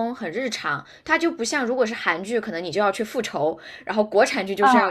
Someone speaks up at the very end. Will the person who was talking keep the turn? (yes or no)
yes